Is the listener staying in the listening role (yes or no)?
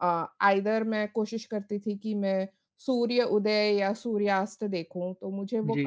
yes